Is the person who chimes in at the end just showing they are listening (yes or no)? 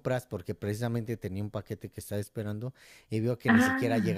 yes